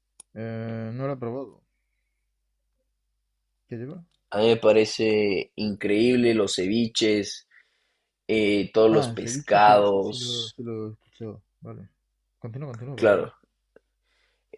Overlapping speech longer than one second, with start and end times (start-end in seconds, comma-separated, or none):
8.9-10.6